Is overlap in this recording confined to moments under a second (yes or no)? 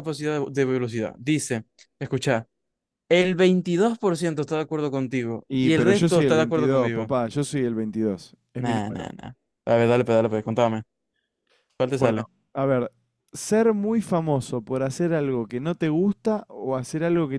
no